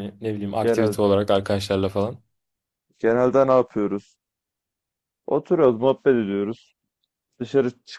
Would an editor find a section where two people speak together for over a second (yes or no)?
no